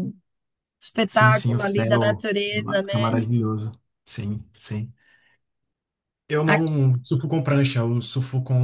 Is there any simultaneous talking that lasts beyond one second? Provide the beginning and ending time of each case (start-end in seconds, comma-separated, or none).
1.1-3.2